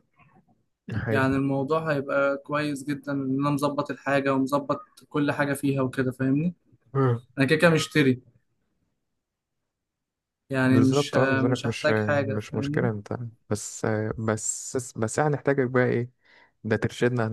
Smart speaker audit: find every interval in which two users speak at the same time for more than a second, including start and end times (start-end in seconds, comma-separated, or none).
10.6-12.9